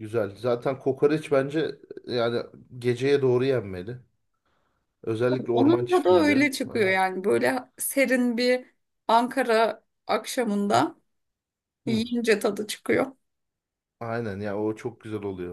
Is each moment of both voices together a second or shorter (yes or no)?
no